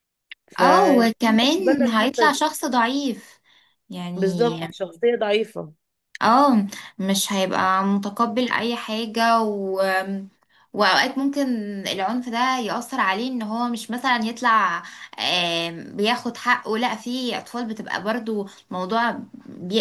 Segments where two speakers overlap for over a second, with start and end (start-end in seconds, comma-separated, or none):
0.6-2.4